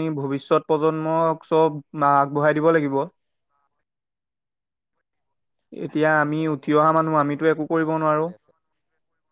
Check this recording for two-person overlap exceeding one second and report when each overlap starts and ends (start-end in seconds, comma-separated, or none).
6.0-8.2